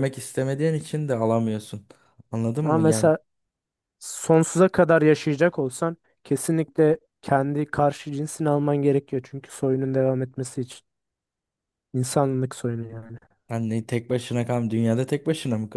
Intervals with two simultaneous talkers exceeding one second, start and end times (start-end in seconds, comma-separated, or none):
none